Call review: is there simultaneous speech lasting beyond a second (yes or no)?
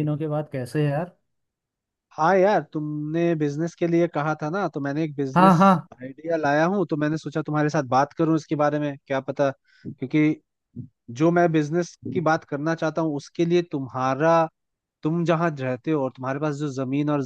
no